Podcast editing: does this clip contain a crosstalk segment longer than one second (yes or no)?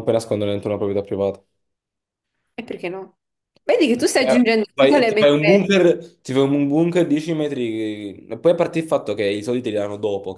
yes